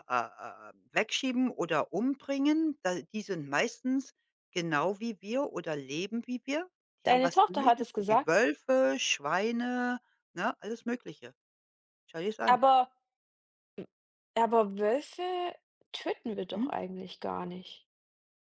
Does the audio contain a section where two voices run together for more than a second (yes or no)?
yes